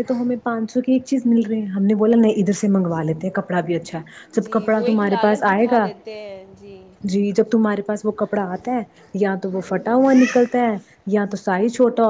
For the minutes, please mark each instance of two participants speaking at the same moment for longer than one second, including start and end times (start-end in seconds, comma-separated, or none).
4.4-5.9